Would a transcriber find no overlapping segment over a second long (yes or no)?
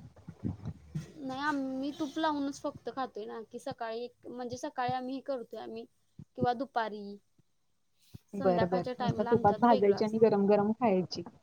no